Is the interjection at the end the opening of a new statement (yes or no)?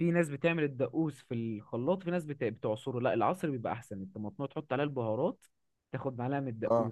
no